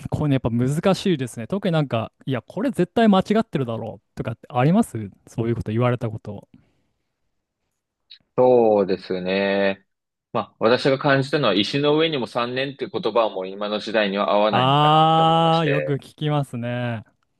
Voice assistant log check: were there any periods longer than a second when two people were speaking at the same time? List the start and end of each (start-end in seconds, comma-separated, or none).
14.5-16.0